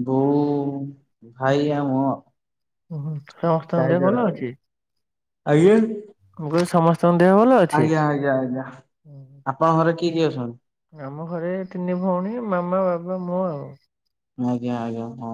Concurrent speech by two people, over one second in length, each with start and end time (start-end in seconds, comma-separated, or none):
none